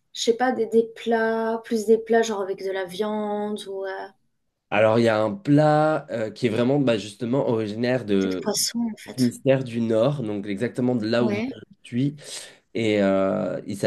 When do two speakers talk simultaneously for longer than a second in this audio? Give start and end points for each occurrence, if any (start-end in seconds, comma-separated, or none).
none